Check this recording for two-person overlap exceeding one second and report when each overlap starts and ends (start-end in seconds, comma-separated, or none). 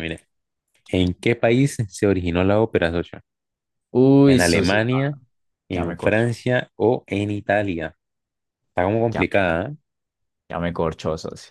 none